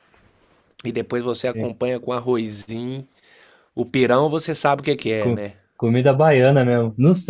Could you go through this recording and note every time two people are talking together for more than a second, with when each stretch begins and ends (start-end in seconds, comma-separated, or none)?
none